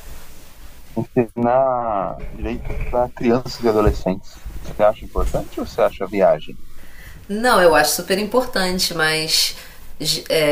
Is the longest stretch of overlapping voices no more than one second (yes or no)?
yes